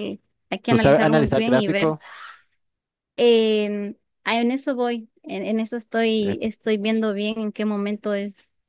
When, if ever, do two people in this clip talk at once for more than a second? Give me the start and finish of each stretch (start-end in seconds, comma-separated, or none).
0.7-1.9